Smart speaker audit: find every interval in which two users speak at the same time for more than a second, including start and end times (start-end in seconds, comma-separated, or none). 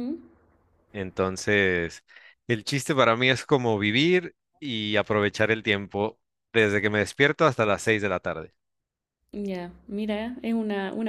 none